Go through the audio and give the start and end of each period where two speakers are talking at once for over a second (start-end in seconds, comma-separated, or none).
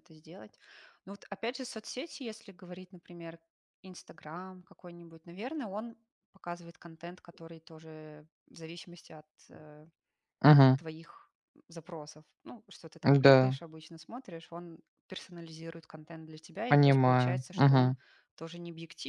16.7-17.9